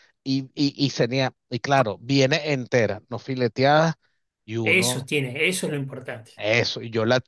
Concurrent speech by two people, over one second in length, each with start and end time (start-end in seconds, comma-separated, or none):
none